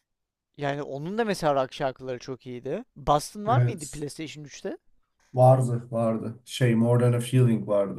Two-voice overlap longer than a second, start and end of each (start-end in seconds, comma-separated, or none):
none